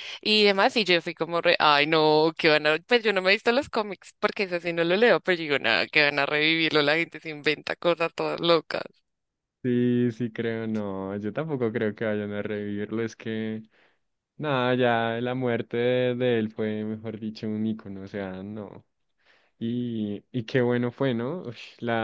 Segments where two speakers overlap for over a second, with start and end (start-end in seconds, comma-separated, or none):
none